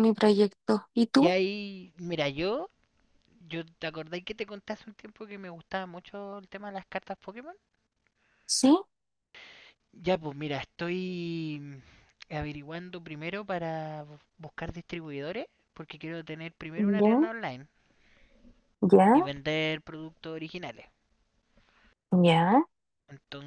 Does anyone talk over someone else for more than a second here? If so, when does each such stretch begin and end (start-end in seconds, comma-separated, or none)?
none